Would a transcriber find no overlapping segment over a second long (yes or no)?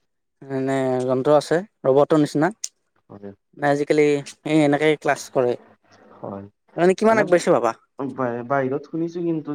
yes